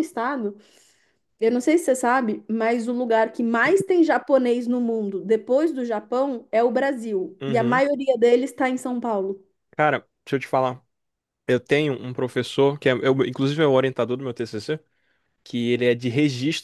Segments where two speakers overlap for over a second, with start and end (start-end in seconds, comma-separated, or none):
none